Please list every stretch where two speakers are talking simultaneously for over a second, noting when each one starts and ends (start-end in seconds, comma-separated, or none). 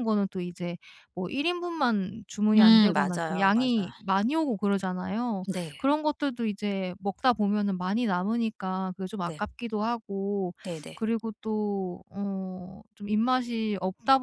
2.6-3.9